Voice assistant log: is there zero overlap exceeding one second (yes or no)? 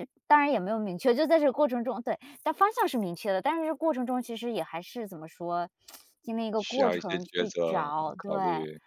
no